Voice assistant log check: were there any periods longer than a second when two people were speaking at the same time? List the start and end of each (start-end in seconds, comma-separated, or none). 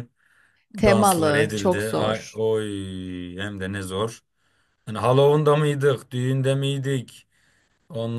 0.8-2.4